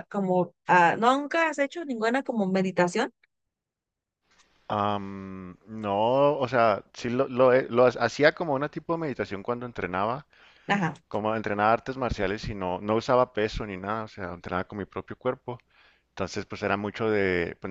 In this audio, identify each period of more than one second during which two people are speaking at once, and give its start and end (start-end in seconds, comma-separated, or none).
none